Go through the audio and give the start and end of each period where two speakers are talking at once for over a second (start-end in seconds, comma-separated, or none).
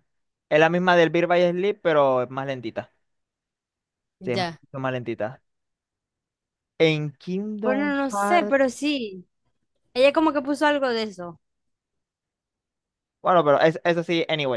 7.6-8.9